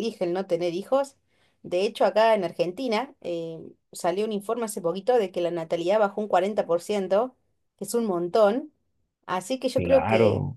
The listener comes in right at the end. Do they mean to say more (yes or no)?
no